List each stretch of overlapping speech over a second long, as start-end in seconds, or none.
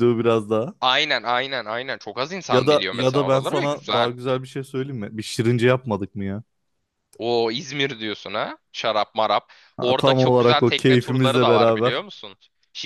2.5-4.1, 9.8-12.1